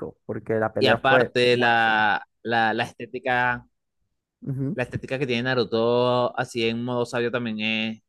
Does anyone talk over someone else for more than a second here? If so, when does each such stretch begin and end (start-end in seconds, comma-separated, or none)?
0.8-2.0